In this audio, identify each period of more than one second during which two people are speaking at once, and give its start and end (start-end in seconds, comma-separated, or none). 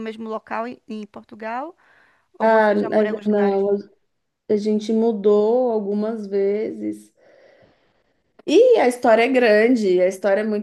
2.4-3.6